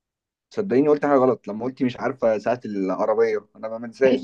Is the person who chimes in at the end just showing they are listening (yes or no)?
no